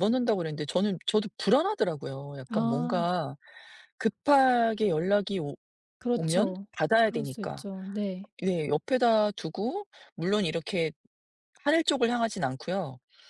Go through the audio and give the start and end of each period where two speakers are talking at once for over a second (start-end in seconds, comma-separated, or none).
6.2-7.6